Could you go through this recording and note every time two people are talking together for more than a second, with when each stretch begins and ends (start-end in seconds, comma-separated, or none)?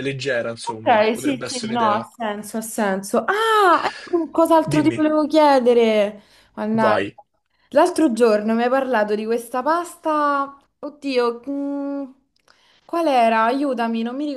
0.6-2.1